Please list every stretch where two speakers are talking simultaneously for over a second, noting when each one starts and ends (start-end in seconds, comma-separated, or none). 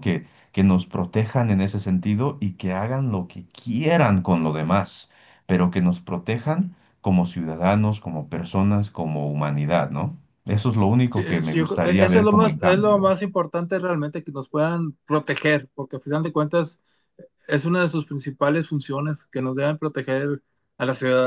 11.1-13.1